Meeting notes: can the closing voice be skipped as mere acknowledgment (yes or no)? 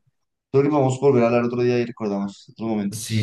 no